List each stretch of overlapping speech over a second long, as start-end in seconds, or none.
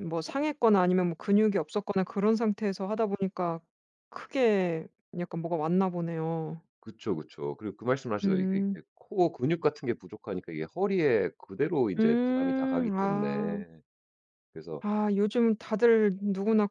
12.0-13.6